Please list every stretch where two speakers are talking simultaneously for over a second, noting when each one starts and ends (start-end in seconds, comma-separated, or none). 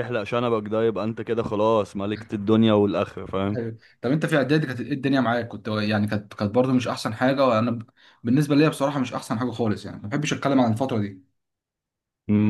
none